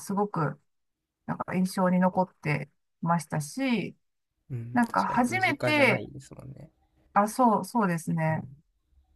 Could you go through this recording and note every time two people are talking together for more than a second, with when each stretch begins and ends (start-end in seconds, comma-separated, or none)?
4.7-6.0